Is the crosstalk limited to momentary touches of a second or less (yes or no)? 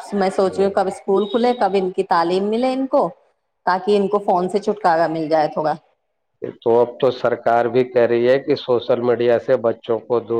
yes